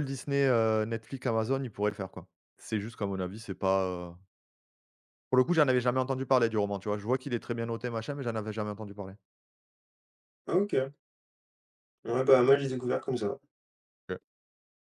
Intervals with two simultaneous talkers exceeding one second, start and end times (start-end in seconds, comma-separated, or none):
none